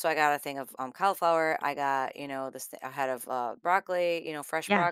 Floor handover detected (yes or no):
no